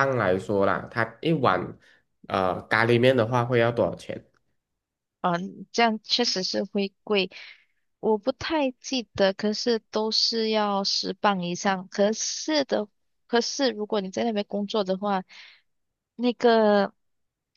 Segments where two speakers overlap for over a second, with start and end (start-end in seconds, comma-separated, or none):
none